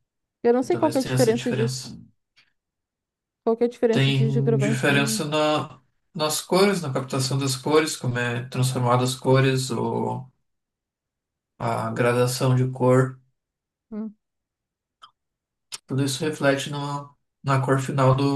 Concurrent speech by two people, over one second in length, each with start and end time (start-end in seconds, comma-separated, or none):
0.6-1.9, 3.9-5.2